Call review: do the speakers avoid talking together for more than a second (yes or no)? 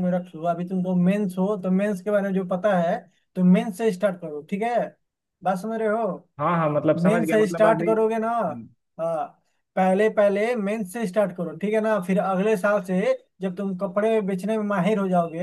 no